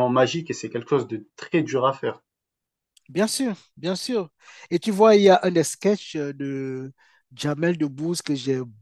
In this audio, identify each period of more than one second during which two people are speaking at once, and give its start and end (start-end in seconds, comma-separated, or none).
none